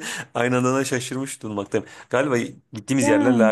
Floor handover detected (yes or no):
no